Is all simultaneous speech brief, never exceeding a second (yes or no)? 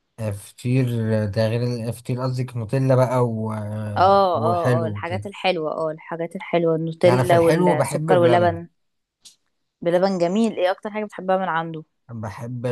no